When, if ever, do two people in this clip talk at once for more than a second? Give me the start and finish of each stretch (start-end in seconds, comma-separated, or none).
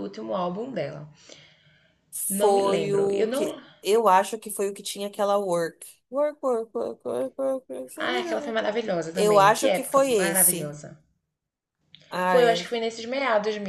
2.4-3.6, 9.1-10.8